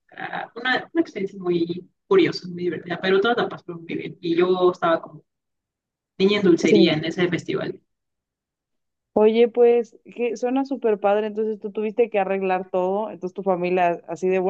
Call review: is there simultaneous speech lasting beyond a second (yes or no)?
no